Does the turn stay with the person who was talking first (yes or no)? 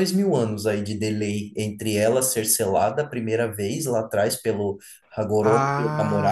no